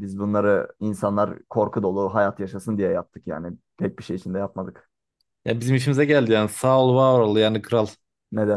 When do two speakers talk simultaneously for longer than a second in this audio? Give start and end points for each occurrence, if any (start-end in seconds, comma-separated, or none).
none